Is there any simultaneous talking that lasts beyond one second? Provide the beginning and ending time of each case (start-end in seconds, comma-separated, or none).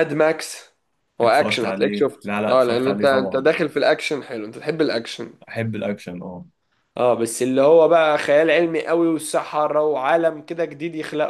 1.2-3.5